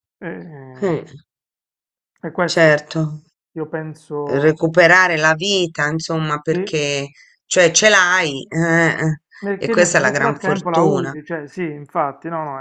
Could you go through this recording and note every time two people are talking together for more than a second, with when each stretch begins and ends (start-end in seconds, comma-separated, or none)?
9.6-11.1